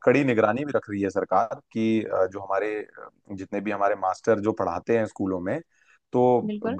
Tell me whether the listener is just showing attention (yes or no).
yes